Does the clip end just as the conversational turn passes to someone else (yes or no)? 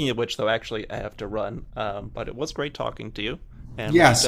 yes